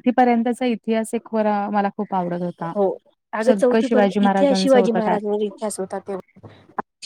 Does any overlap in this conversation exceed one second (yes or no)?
yes